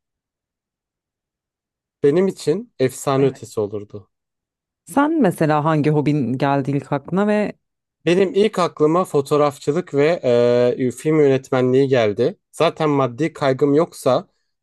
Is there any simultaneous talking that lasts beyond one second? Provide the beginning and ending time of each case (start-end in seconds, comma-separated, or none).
none